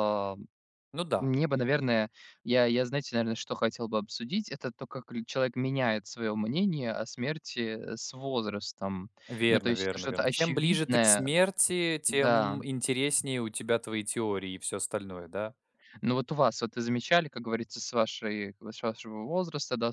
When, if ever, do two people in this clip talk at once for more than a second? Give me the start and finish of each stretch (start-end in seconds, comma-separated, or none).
9.5-11.3